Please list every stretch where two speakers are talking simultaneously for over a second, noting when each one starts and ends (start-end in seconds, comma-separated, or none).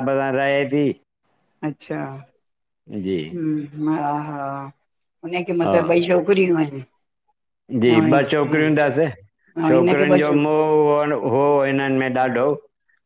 9.7-11.5